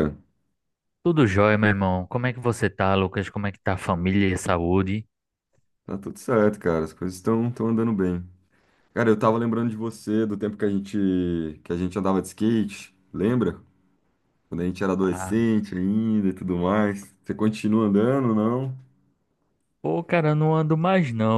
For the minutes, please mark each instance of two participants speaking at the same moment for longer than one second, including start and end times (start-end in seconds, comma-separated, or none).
none